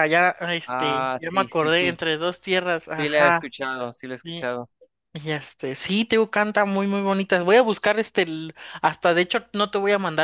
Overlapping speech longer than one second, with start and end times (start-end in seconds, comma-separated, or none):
0.6-2.0